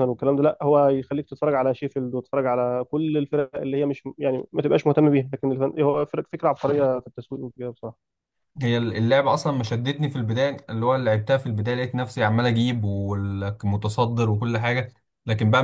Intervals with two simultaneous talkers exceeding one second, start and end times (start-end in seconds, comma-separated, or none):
none